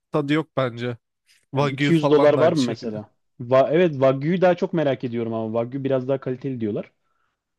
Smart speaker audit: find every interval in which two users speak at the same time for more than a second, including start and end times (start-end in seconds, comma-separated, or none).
1.6-3.0